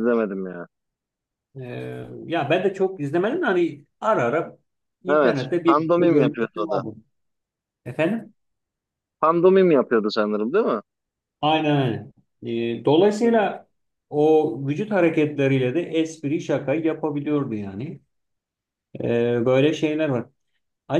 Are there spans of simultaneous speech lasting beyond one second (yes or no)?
yes